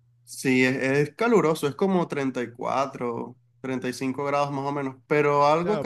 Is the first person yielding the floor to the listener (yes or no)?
yes